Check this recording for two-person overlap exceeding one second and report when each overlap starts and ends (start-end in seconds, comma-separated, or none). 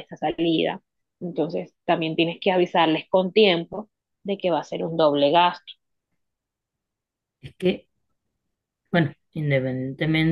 none